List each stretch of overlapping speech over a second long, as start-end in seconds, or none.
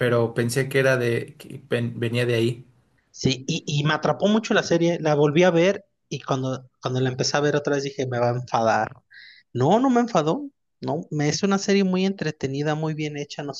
none